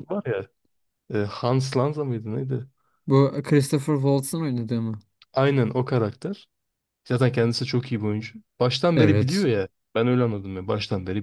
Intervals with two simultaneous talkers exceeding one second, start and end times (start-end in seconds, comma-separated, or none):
none